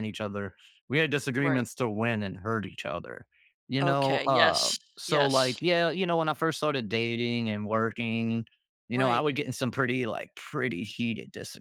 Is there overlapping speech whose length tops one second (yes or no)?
yes